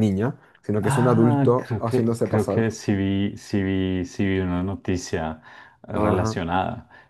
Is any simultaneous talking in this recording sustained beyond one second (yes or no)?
yes